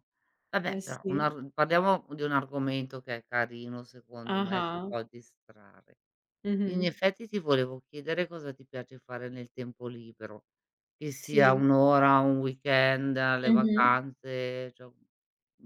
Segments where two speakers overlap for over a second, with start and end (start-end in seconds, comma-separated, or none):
none